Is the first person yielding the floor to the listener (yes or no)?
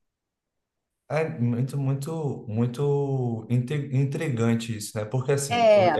no